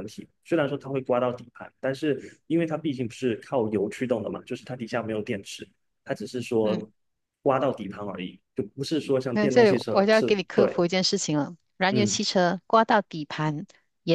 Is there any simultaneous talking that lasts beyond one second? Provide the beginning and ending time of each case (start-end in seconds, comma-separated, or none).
9.3-10.7